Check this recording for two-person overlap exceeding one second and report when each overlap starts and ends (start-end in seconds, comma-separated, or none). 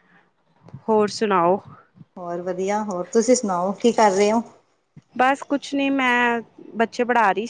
none